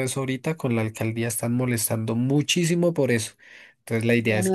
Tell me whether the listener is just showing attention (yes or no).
yes